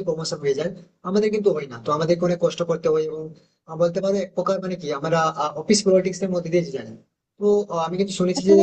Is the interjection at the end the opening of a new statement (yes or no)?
no